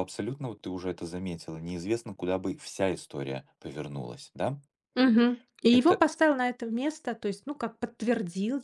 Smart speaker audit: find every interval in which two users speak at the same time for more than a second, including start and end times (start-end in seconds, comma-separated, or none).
none